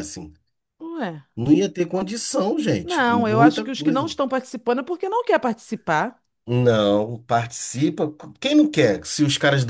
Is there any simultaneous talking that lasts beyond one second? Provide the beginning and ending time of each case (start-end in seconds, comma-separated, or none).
2.8-4.1